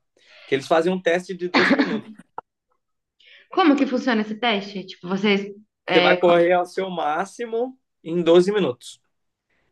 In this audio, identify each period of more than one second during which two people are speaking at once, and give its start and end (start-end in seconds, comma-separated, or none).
none